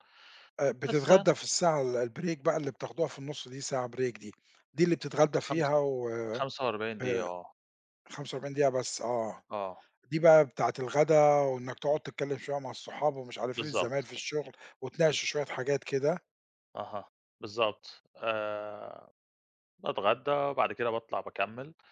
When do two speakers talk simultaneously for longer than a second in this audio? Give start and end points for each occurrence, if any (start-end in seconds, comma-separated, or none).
none